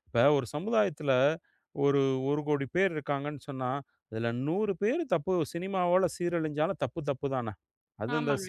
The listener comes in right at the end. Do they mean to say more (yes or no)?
yes